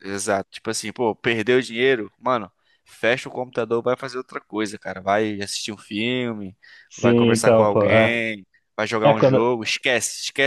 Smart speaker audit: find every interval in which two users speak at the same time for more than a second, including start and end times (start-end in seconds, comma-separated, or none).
7.0-8.2